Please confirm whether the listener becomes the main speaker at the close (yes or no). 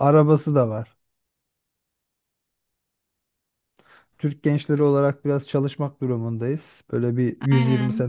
yes